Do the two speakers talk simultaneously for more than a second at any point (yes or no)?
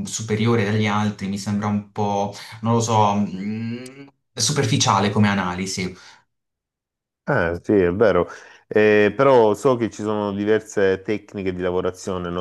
no